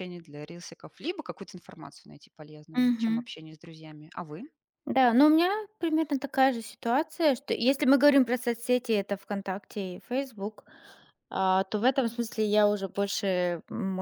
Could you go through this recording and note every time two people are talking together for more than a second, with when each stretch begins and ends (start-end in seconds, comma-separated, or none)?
none